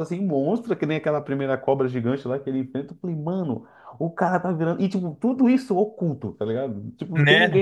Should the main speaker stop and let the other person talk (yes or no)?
no